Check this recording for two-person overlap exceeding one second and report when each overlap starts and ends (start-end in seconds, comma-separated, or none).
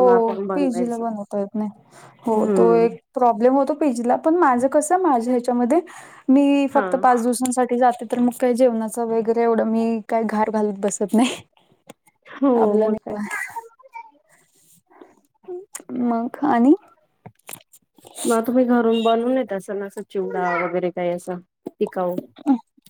none